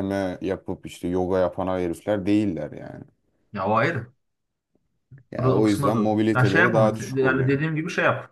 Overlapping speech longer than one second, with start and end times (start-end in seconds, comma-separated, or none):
5.4-7.6